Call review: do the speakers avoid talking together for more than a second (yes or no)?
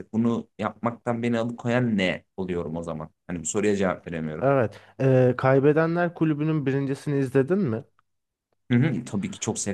yes